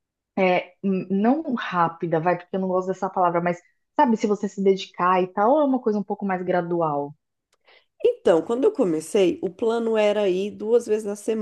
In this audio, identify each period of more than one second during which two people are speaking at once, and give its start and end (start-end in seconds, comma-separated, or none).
none